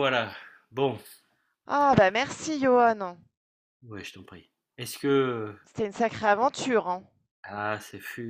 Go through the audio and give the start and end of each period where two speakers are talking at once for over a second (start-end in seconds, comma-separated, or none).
none